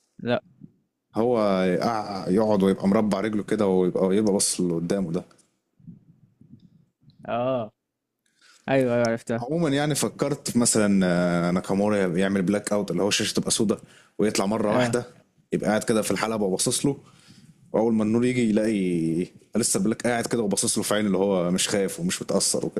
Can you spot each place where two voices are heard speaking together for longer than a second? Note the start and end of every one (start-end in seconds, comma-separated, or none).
none